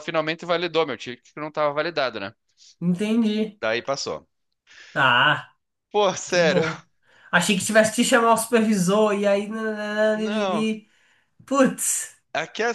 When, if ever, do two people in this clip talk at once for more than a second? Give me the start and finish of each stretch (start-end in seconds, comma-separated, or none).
none